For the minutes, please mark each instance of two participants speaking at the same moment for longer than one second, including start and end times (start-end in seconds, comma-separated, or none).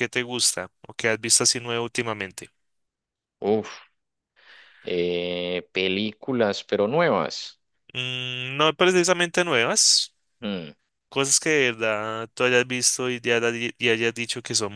none